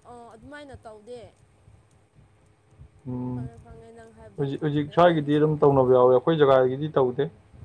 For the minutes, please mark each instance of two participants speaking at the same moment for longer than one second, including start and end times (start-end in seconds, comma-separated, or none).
4.4-6.1